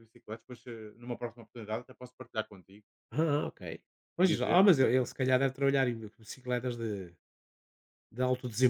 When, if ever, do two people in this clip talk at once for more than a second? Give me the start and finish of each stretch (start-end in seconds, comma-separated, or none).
4.2-5.5